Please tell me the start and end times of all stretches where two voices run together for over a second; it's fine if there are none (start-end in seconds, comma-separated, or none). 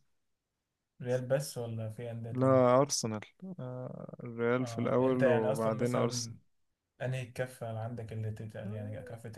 4.6-6.3